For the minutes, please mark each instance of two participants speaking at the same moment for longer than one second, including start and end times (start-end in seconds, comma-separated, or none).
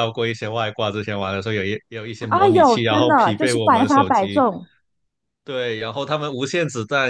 2.2-4.5